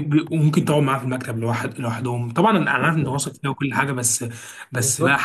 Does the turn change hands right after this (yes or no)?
yes